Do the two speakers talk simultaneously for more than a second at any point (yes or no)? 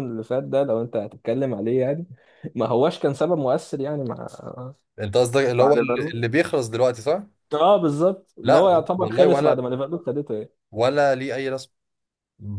yes